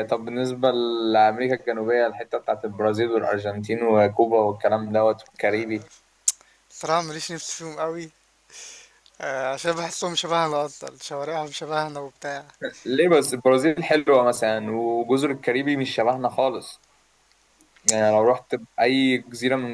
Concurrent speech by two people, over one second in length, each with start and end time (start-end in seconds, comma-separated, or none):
none